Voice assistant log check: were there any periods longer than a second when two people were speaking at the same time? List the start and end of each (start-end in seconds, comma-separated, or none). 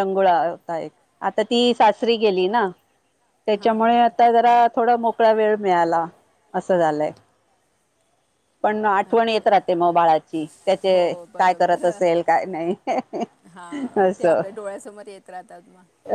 none